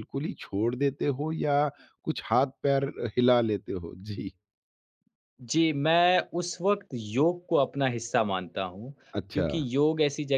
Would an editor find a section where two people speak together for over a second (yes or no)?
no